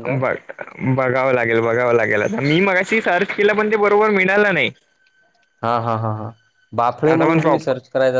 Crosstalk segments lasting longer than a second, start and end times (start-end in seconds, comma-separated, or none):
none